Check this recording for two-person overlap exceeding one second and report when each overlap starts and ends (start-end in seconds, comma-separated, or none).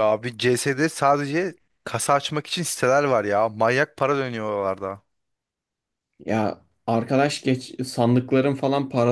none